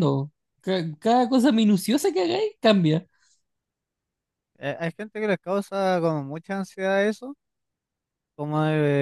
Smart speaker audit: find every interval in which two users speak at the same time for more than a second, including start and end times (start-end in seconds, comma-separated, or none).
none